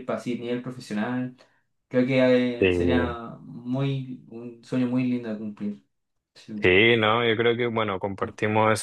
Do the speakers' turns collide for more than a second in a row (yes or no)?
no